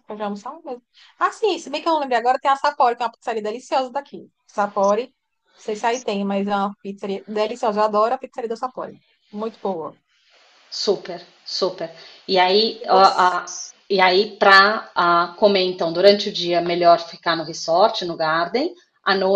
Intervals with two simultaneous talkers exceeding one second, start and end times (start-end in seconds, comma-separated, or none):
none